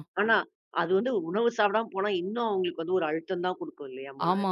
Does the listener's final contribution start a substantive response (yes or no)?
yes